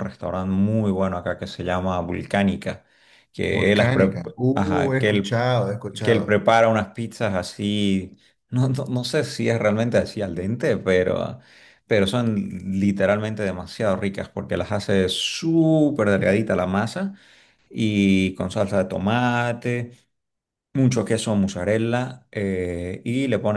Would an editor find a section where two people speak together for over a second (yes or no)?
yes